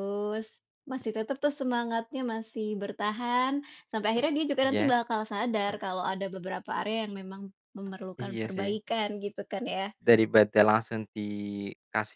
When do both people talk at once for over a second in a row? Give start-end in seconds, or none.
none